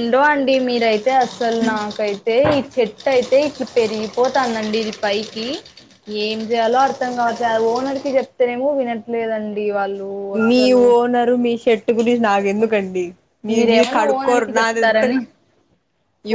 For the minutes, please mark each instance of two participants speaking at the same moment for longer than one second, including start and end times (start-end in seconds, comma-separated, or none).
13.6-15.0